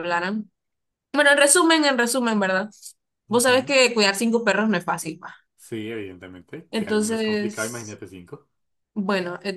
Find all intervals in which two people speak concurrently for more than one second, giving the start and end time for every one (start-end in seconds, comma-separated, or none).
6.7-8.0